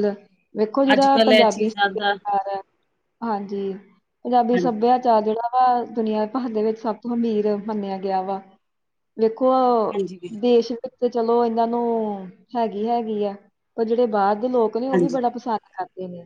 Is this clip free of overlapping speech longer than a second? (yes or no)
no